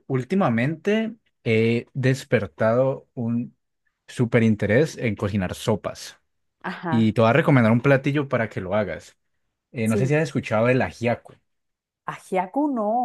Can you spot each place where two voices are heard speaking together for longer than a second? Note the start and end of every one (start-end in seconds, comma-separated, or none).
none